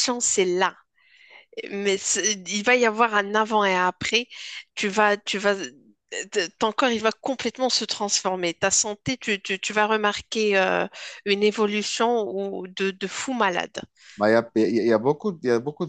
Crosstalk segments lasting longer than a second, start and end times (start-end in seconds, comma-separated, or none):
none